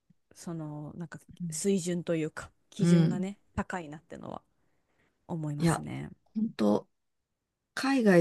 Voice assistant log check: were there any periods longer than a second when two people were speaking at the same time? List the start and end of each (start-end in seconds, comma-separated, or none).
none